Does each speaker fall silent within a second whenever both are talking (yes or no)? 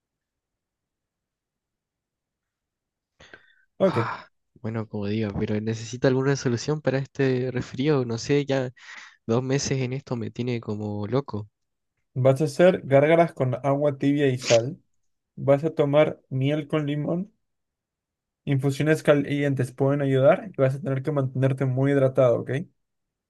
yes